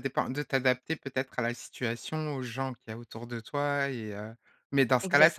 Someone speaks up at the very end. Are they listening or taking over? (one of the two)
listening